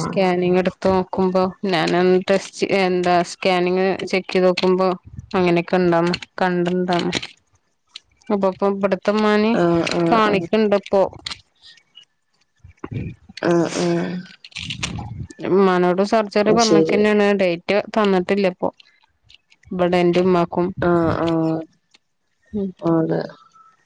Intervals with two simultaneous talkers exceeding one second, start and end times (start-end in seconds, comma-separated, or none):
none